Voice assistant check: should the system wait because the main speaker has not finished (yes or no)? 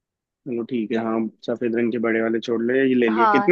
no